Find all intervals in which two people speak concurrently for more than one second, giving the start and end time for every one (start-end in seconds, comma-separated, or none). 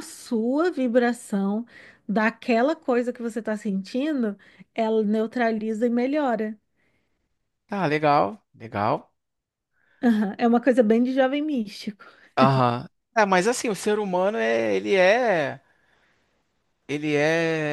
none